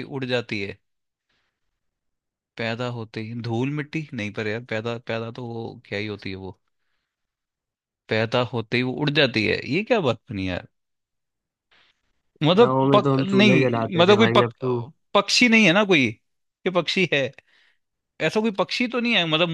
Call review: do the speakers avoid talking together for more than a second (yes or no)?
no